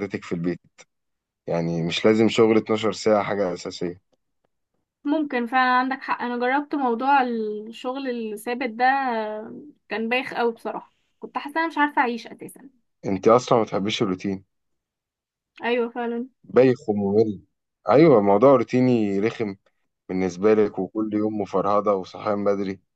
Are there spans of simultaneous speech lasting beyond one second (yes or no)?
no